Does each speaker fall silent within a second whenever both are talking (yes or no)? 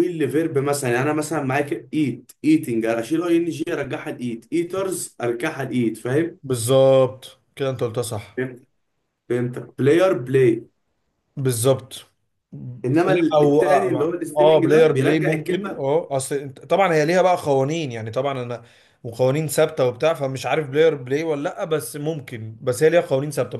no